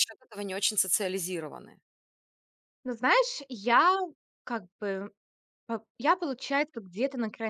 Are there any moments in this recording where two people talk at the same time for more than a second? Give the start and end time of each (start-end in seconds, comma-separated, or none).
none